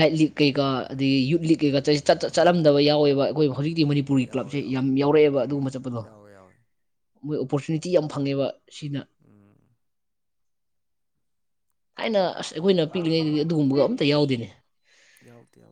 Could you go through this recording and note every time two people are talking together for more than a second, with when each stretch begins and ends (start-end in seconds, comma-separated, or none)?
none